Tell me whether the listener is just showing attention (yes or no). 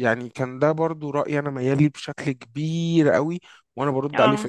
yes